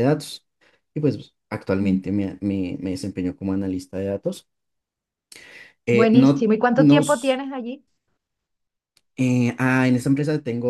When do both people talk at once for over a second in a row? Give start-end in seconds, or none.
5.9-7.4